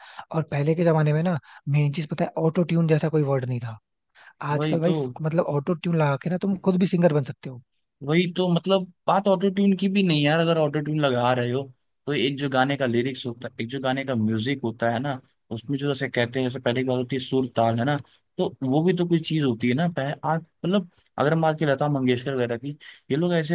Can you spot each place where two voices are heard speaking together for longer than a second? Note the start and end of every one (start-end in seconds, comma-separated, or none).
none